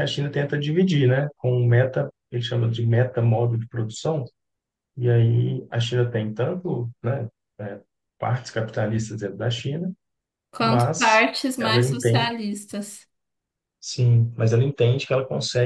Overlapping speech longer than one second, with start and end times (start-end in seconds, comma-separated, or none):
10.6-12.3